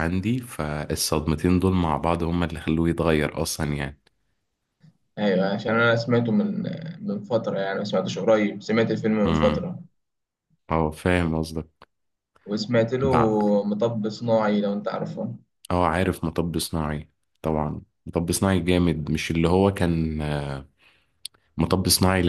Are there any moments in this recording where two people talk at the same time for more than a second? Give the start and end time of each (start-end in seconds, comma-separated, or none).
none